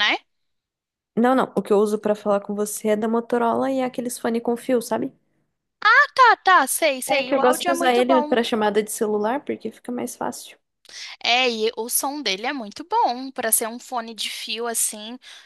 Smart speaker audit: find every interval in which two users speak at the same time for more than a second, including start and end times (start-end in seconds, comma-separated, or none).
7.1-8.3